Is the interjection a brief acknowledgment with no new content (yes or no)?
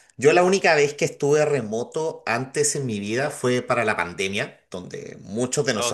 yes